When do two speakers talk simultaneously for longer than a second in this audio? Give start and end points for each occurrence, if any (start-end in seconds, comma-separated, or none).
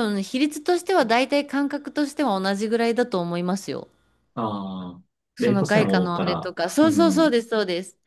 5.4-7.3